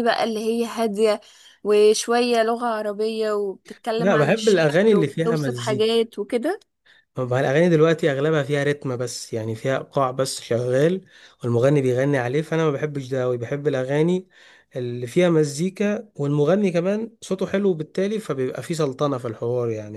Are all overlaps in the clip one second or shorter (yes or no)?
no